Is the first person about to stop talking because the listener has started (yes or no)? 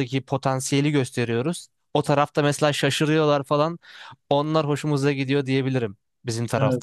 yes